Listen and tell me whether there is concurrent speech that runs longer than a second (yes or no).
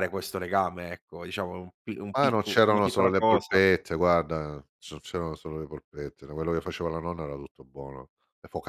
yes